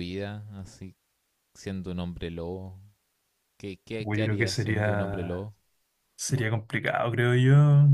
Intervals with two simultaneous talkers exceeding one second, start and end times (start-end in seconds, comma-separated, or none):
4.0-5.5